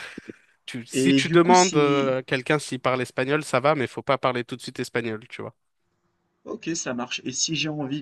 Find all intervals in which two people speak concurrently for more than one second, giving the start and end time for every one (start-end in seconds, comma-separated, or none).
0.9-2.1